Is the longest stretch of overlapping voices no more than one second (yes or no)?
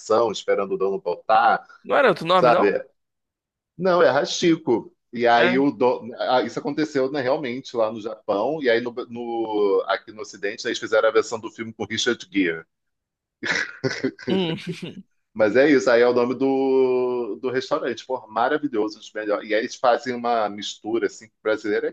yes